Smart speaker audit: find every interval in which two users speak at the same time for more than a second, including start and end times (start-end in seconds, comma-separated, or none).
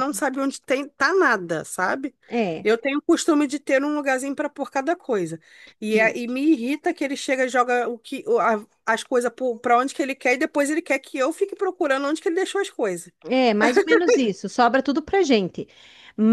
none